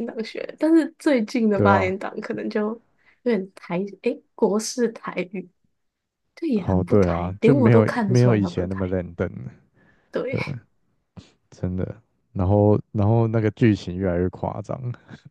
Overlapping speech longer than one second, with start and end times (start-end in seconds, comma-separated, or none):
6.5-8.9